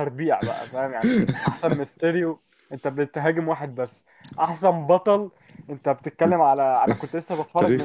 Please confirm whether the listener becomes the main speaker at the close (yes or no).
no